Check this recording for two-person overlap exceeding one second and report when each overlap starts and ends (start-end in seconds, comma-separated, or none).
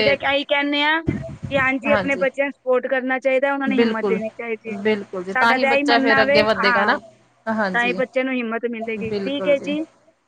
5.3-6.9